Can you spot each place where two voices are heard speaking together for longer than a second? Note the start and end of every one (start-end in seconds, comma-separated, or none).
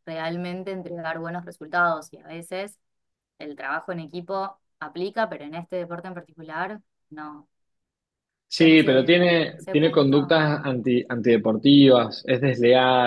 8.5-10.4